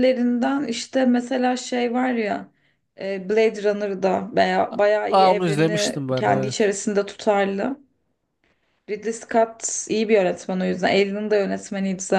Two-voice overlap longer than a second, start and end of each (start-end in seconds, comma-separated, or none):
5.1-6.7